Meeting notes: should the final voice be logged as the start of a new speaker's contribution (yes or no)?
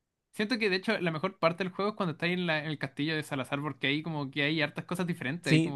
yes